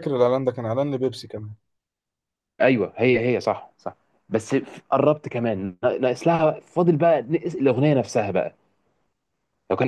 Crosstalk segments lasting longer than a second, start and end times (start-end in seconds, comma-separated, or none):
none